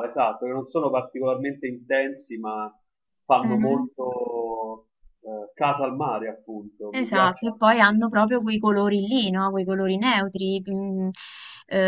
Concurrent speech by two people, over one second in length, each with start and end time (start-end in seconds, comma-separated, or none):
6.9-8.2